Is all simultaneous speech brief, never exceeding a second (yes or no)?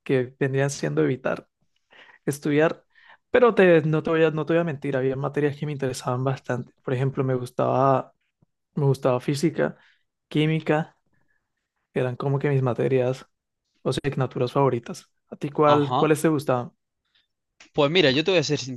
yes